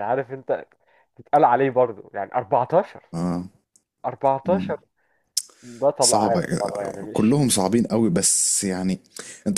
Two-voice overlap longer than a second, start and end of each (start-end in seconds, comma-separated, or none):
6.0-7.4